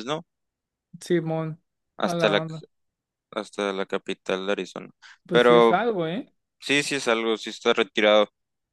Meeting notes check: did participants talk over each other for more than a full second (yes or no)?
no